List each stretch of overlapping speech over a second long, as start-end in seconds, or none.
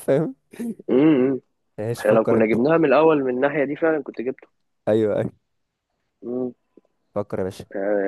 none